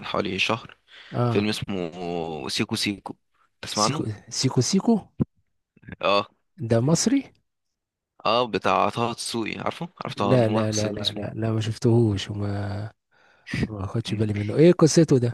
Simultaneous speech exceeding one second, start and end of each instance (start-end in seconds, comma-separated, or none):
10.2-11.4